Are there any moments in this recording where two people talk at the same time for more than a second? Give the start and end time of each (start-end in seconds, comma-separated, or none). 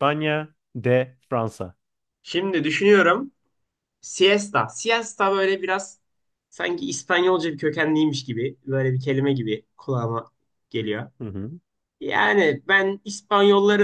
none